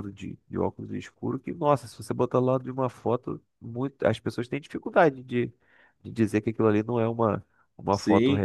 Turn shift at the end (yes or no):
yes